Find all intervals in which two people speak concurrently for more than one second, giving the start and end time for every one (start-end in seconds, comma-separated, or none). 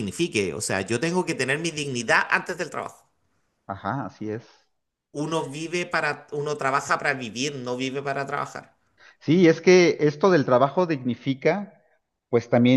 none